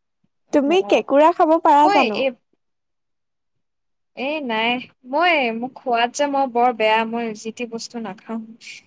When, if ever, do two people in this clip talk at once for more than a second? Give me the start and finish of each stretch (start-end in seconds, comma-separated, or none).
none